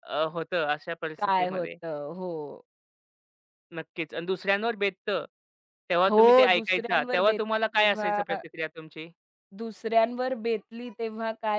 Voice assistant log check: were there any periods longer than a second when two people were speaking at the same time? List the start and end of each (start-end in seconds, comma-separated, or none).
6.1-8.4